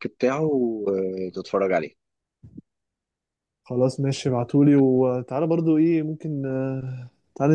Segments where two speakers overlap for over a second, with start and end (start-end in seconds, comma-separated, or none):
none